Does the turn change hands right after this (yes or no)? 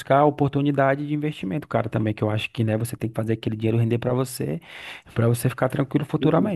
yes